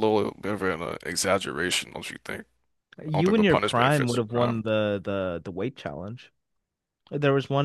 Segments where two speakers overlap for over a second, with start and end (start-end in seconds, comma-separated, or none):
3.1-4.6